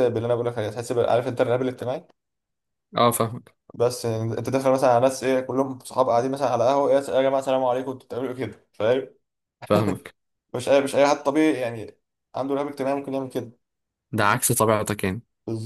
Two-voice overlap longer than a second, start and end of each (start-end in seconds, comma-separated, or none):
none